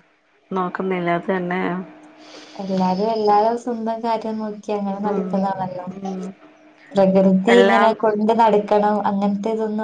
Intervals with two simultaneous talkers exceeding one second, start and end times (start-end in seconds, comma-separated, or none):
none